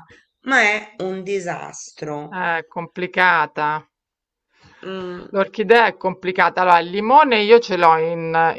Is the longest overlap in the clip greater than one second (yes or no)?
no